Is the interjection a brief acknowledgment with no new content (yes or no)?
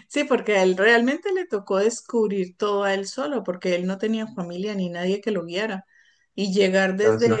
yes